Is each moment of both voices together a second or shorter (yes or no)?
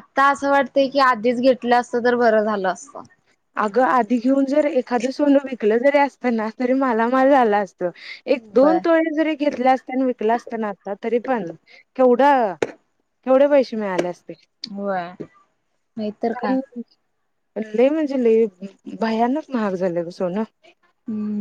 yes